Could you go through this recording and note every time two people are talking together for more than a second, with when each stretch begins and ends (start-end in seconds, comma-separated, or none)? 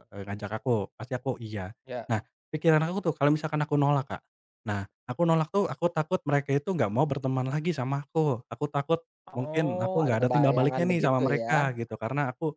9.4-11.5